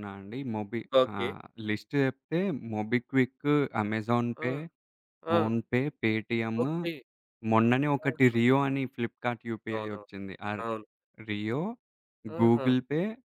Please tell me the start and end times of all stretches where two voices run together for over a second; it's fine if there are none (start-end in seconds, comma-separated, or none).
none